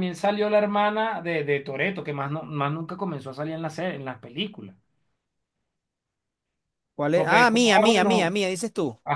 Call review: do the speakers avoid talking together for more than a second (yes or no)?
no